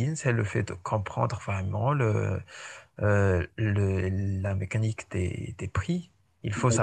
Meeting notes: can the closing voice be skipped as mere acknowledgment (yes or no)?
yes